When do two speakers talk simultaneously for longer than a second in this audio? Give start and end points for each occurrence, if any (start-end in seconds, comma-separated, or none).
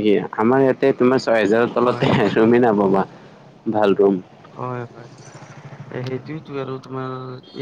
none